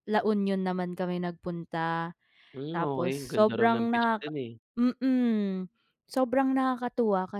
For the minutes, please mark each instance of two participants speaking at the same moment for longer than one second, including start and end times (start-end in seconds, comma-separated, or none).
2.7-4.3